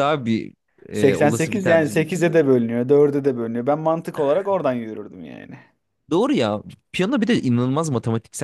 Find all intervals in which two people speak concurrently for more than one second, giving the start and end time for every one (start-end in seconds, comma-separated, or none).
0.9-2.3